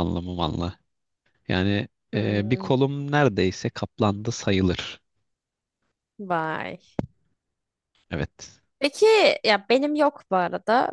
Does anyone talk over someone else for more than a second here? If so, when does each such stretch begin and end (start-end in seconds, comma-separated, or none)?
none